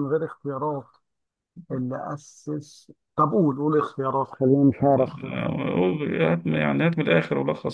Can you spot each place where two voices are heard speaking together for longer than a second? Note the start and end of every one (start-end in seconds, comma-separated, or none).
none